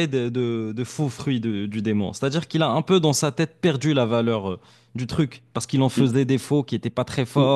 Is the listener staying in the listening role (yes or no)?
no